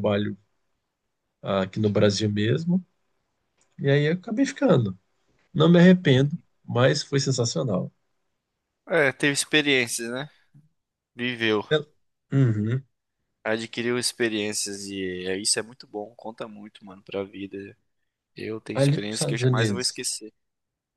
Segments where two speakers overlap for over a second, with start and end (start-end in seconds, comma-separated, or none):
18.7-20.0